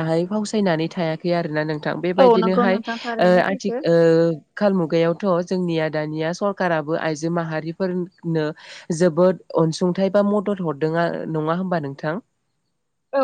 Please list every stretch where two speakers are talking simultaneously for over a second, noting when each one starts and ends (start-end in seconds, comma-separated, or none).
none